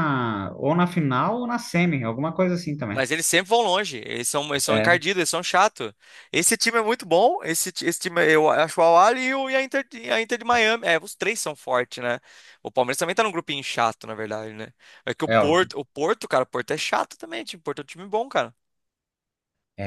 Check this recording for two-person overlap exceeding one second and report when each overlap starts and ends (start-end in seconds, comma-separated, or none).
none